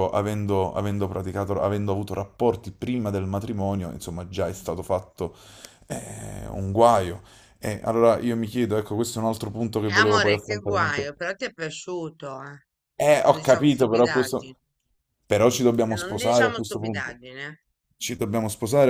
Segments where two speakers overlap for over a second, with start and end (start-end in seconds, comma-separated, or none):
9.9-11.1, 13.3-14.5, 15.9-17.1